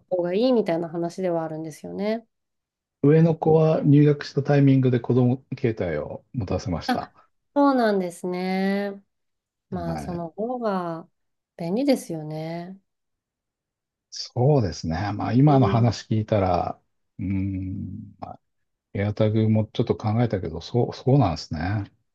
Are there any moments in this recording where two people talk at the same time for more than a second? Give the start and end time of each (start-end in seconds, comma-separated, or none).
none